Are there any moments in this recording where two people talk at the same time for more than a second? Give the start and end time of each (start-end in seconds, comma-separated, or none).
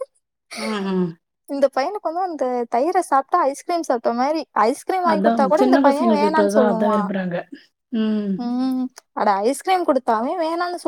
none